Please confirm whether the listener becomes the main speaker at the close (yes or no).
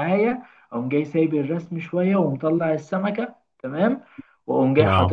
no